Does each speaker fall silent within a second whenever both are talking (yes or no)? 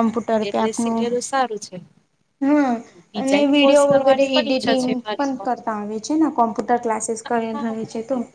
no